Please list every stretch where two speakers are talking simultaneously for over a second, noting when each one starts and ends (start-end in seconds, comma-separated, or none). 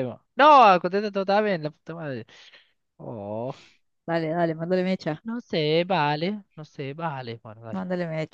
none